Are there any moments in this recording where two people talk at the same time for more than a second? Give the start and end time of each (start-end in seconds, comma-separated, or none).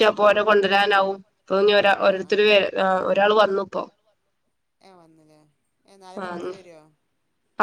none